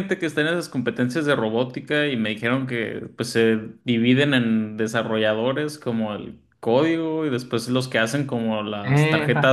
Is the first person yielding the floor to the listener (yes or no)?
no